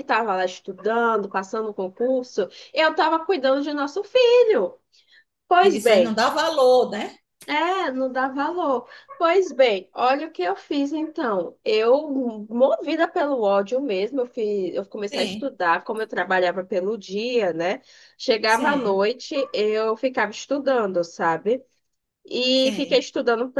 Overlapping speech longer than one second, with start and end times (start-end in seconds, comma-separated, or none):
none